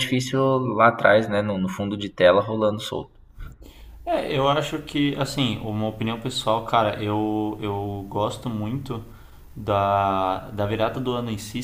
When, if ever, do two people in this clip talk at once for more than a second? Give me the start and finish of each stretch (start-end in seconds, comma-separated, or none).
none